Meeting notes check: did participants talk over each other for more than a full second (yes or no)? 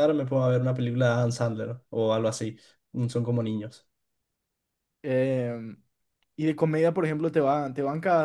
no